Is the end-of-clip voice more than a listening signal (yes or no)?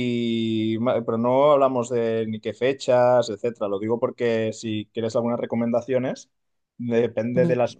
no